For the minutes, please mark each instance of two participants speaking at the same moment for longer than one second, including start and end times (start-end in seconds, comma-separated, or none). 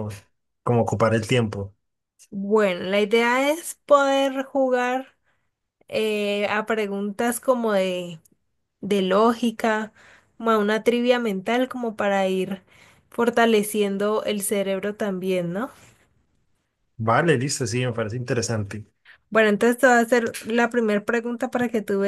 none